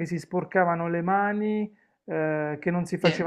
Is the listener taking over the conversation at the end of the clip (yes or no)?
no